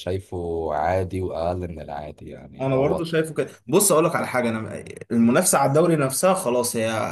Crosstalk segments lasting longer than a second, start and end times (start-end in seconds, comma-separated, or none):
none